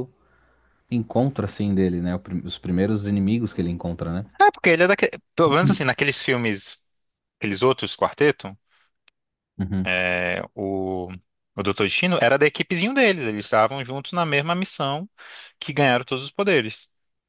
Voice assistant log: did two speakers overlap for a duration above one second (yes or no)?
no